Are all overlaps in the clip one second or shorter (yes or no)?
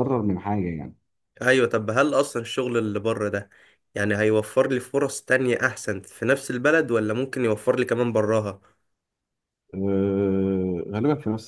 yes